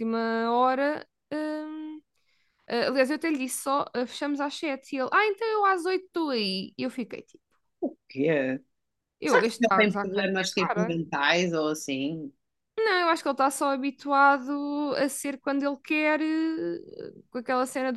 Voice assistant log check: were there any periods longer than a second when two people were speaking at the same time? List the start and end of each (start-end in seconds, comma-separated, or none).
9.3-11.0